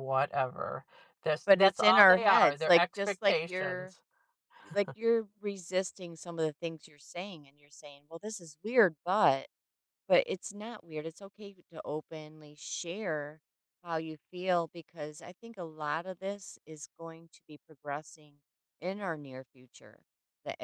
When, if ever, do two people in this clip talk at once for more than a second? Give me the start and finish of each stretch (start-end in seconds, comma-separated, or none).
1.4-4.0